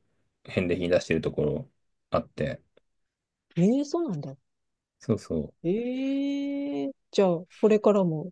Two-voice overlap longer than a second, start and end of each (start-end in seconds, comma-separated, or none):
none